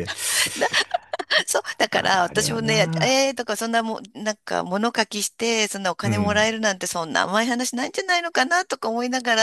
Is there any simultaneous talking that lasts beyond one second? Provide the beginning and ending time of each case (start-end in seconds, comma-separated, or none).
1.9-3.3